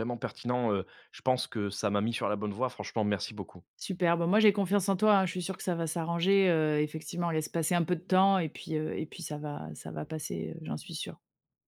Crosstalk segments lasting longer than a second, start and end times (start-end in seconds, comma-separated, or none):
none